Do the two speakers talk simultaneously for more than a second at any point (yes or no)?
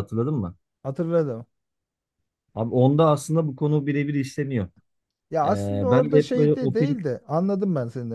yes